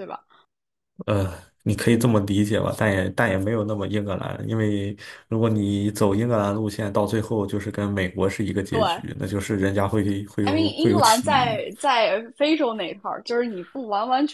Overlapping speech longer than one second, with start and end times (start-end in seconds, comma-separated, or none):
10.4-11.6